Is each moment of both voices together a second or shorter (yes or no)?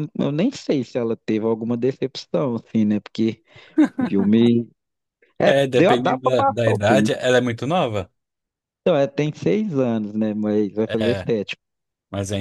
no